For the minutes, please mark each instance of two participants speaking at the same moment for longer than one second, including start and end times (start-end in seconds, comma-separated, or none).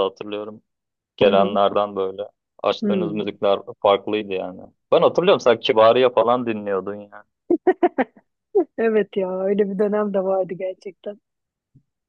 none